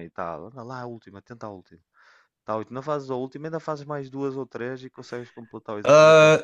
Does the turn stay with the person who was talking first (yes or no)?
no